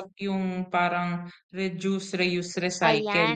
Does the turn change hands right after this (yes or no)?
yes